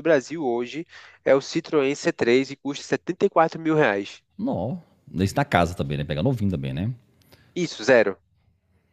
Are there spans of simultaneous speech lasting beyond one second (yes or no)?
no